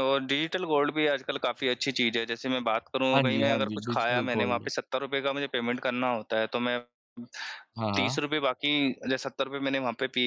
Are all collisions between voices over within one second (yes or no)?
no